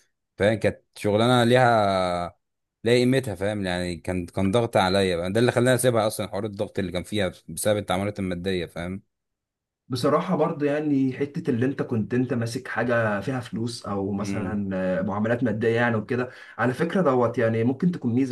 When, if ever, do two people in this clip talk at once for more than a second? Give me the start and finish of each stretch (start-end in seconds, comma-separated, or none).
none